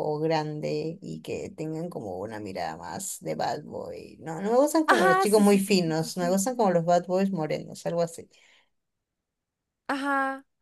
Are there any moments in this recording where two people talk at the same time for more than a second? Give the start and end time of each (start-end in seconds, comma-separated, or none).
4.9-6.4